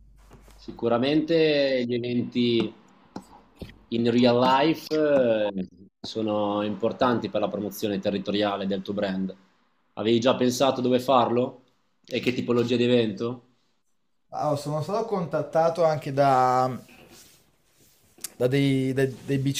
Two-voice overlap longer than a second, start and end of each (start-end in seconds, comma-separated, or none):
none